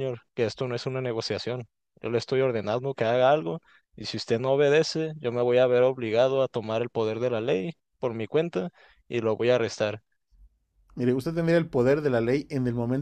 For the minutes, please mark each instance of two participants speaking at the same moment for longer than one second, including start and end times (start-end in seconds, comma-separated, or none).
none